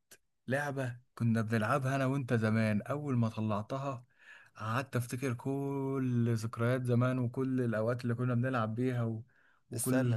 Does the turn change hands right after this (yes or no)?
no